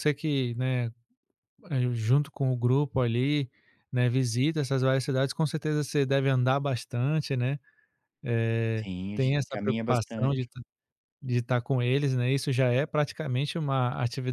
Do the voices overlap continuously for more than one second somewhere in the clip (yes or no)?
yes